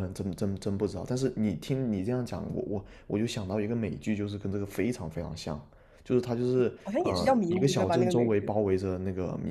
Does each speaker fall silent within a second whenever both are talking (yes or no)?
no